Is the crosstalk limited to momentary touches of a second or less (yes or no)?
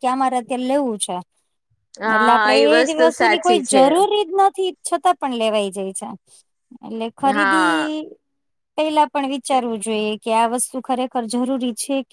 no